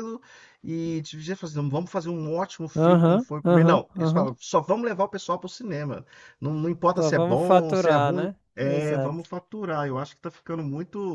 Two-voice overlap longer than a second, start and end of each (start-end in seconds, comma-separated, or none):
2.8-4.3, 7.0-9.2